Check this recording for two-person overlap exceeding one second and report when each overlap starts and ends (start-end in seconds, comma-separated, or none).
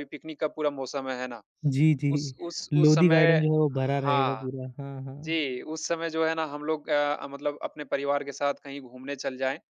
none